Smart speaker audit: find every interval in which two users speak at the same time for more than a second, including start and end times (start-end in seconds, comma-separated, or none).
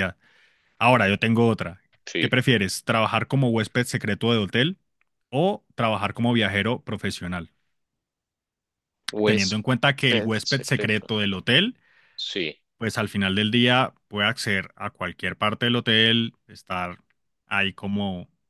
9.2-11.1